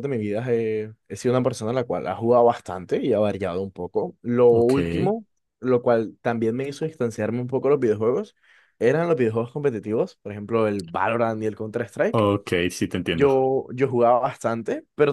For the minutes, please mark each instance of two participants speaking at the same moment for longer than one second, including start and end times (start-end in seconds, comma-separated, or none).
none